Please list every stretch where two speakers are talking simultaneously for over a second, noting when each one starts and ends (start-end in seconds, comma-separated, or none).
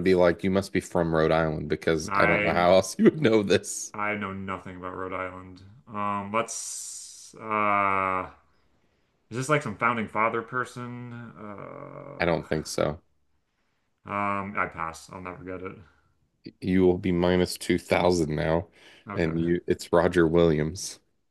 none